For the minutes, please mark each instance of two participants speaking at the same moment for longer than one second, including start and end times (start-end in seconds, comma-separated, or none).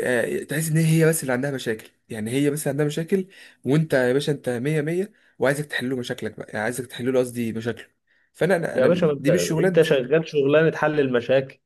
8.7-10.0